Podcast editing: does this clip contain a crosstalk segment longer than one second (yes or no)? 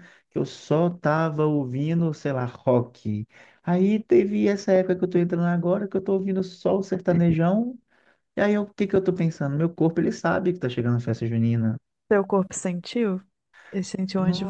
no